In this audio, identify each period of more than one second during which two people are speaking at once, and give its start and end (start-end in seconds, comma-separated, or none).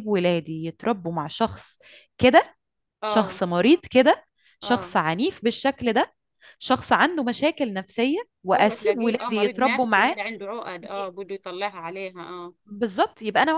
8.6-10.2